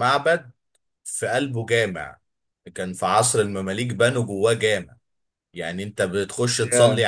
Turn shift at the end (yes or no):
no